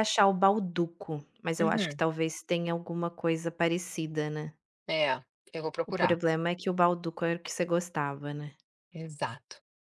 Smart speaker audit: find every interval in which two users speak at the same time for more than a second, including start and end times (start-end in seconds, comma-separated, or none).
none